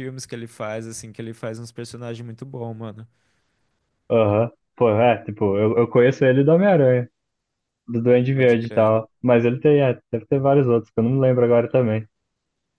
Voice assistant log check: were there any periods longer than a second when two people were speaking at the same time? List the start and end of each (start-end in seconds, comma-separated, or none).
none